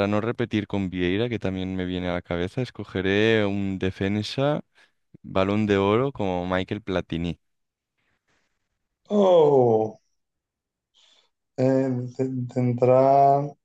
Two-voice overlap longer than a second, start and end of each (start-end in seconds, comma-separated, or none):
none